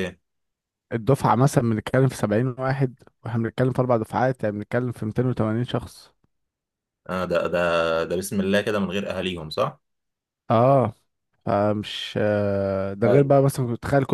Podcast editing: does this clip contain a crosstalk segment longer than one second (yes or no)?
no